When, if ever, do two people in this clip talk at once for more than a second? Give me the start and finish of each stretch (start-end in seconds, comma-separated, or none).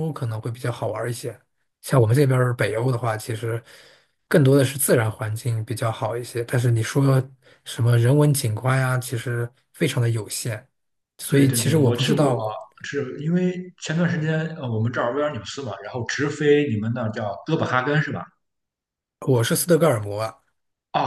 11.3-12.5